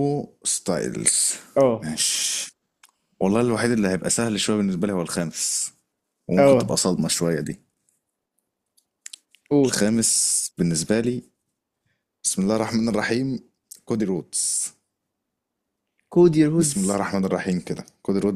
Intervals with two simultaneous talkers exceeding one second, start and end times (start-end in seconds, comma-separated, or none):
none